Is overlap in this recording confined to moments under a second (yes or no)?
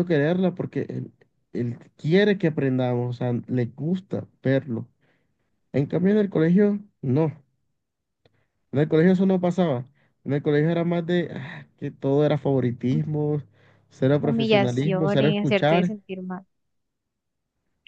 no